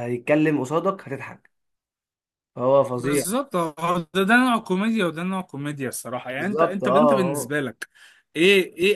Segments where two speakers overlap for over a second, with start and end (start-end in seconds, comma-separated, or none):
6.3-7.5